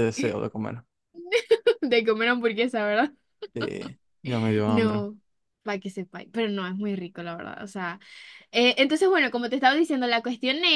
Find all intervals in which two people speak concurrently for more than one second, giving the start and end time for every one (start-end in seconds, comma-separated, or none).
none